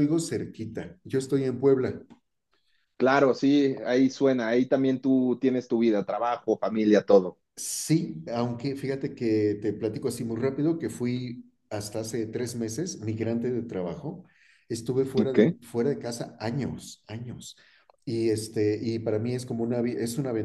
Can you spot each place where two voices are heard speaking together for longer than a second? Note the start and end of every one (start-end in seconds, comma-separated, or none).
none